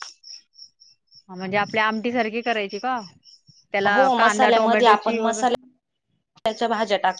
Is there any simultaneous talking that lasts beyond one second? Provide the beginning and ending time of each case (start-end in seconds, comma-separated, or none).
3.9-5.6